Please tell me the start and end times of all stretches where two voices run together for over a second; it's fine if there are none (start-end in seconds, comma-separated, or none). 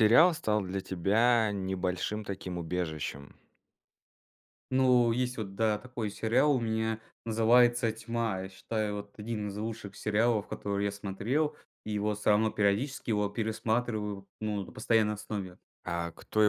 none